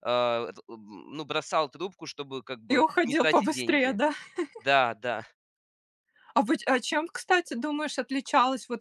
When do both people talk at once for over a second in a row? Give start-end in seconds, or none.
2.7-4.0